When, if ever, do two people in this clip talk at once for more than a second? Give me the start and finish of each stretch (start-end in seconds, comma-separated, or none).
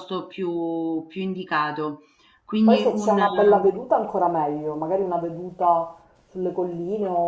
none